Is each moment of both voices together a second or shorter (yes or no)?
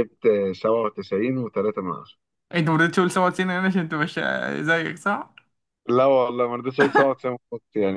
yes